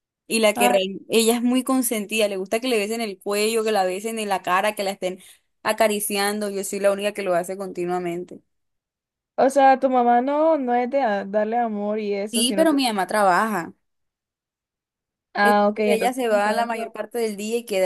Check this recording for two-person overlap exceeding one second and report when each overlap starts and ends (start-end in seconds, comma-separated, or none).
15.4-17.0